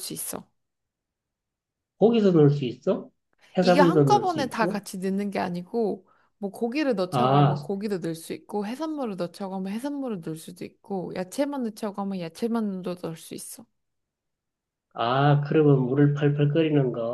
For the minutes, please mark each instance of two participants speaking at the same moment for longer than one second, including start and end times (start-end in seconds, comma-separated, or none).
3.6-4.8